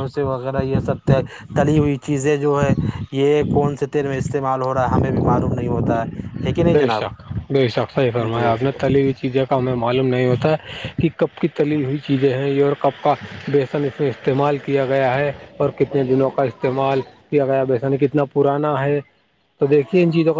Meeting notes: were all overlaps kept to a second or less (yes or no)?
yes